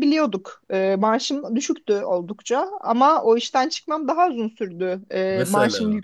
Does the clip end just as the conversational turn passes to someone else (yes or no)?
no